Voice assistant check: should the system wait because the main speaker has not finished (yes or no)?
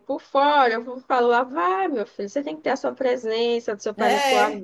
yes